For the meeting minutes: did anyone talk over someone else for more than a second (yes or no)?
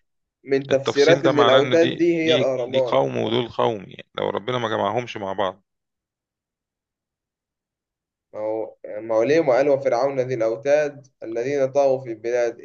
yes